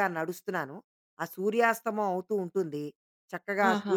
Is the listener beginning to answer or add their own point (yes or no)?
no